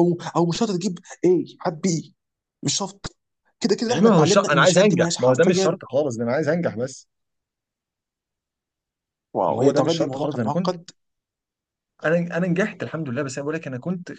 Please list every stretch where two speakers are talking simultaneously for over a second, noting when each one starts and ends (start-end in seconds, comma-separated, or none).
3.9-5.8, 9.5-10.7